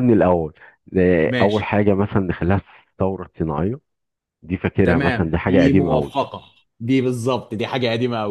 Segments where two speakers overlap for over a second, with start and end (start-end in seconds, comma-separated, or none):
4.8-6.2